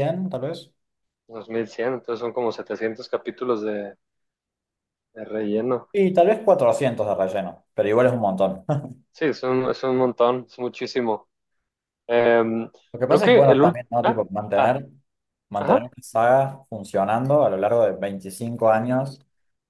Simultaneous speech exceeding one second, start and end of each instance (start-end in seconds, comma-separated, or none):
13.1-14.8